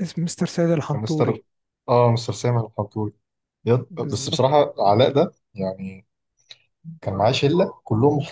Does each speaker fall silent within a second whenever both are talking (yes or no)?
yes